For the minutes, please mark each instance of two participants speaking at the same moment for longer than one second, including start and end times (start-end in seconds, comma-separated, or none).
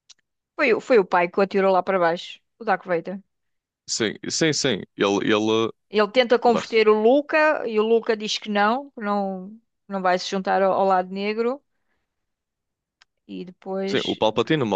none